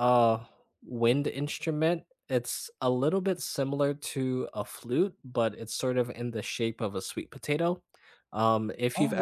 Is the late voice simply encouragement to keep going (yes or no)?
yes